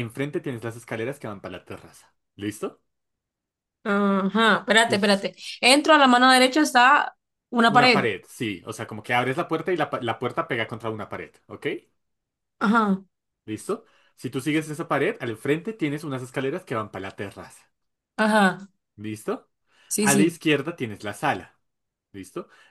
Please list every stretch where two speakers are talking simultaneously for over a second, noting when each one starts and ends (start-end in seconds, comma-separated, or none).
none